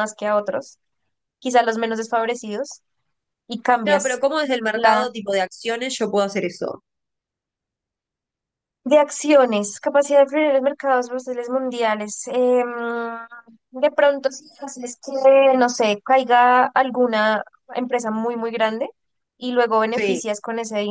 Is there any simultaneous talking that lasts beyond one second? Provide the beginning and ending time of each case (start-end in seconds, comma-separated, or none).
none